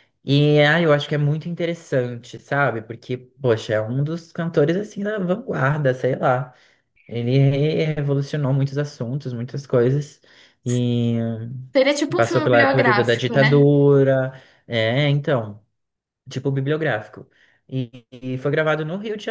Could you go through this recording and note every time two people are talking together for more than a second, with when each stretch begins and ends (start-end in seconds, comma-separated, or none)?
12.2-13.6